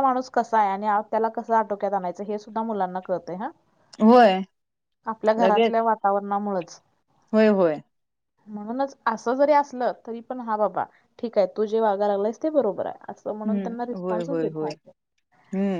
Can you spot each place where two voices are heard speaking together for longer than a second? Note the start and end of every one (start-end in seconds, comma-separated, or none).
13.4-14.7